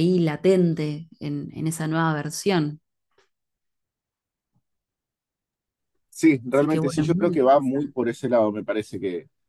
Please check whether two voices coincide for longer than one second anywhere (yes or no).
yes